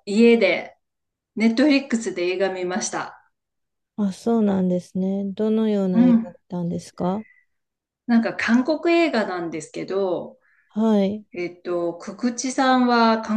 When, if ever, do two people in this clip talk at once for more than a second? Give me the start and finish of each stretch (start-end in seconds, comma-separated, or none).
none